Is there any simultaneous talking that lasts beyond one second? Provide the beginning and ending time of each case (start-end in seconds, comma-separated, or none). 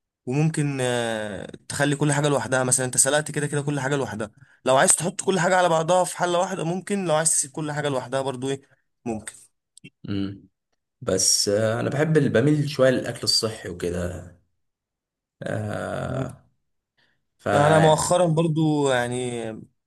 none